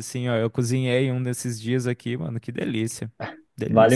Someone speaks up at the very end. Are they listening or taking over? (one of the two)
taking over